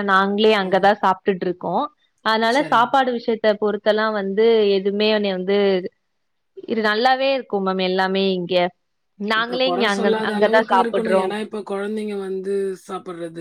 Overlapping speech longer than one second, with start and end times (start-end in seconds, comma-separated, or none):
9.4-11.2